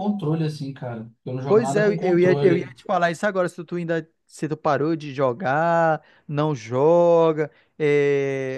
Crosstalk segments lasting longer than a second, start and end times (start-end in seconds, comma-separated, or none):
1.5-2.8